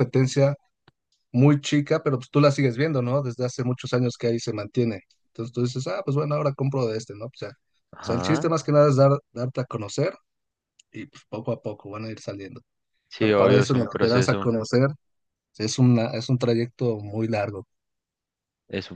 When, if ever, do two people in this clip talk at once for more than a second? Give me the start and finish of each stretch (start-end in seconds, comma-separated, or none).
13.2-14.5